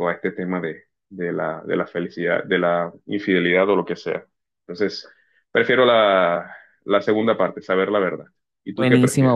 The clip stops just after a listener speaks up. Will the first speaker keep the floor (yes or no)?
no